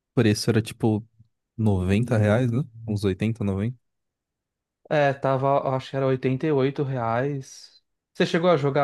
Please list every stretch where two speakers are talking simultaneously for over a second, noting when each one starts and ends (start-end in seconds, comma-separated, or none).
none